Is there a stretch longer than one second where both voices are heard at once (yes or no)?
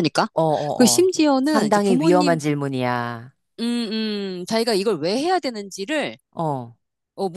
yes